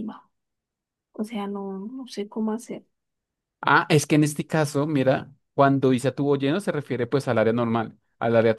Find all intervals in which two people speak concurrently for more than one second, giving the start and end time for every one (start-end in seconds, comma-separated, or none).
none